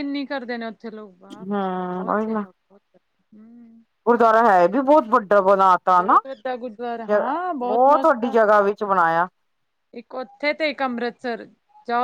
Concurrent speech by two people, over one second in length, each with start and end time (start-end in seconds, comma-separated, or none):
none